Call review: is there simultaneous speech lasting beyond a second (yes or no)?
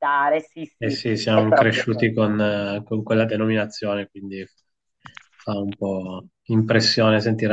yes